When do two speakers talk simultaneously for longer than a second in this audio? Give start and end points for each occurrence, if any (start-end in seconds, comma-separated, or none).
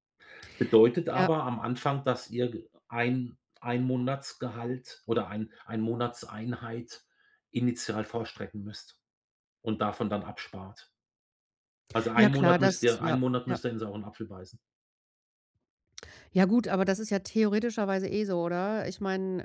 12.2-13.6